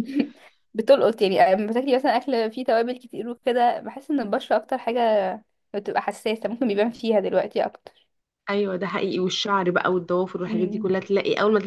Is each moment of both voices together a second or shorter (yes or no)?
yes